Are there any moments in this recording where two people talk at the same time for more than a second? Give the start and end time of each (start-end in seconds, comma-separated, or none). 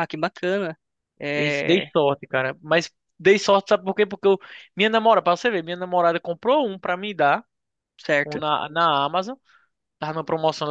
none